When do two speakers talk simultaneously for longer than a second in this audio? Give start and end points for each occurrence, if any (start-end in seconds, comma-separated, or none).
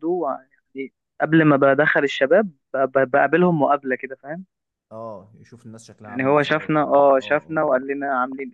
6.0-7.8